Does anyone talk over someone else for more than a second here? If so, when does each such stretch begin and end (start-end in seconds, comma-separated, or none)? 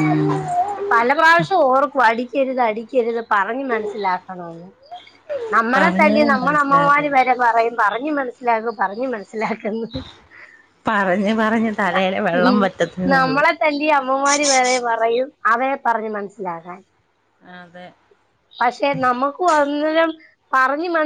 5.8-7.2